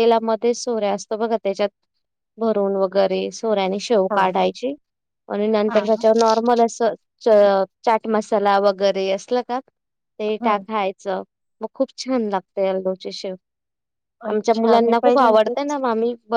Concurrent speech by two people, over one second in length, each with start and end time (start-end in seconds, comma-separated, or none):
14.3-15.8